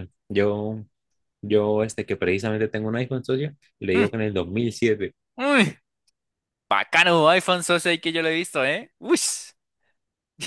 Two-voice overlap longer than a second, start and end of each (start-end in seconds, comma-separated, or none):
none